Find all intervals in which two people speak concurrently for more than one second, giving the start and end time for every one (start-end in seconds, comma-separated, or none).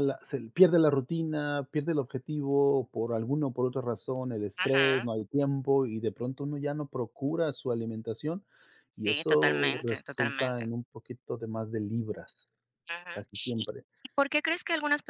8.9-10.7